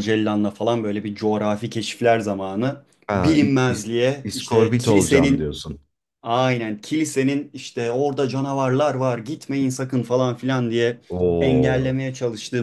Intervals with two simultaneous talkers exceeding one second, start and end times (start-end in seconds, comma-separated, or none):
3.1-5.5